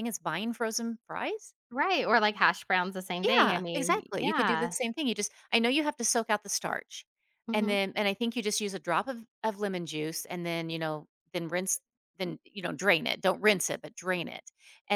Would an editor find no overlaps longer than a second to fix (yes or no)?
no